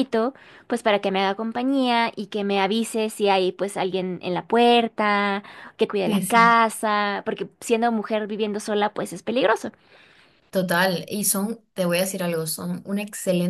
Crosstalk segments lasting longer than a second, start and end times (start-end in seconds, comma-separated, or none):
none